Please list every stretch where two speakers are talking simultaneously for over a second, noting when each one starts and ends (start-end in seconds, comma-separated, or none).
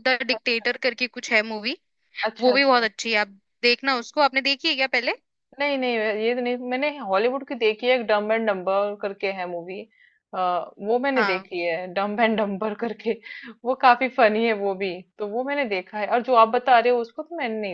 none